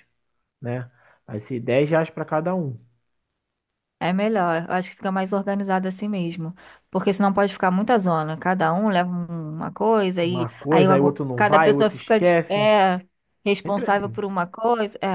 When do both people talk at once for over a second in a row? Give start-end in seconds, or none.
10.2-12.7